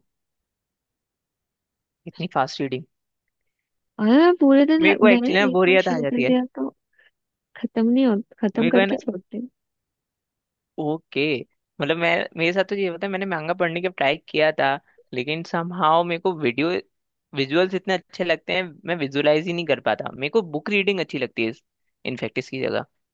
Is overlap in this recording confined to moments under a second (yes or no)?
no